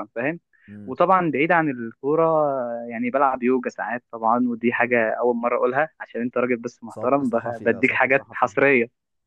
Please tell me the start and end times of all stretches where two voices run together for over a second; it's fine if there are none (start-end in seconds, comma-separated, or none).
6.9-8.5